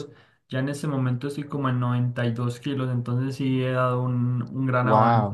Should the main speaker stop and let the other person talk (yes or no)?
yes